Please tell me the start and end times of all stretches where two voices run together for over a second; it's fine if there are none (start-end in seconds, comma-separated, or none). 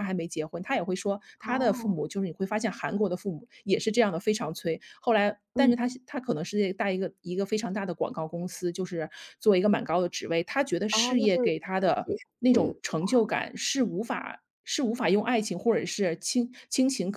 10.9-13.2